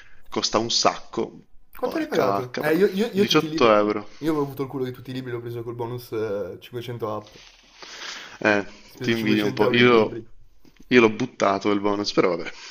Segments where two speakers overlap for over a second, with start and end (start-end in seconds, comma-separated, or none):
1.8-3.7, 9.0-10.2